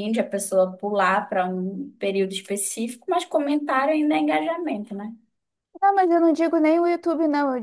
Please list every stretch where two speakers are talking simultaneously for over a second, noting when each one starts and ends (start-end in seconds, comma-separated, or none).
none